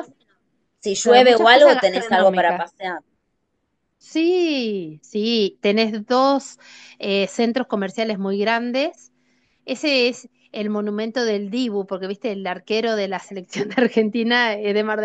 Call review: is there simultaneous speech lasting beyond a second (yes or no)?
yes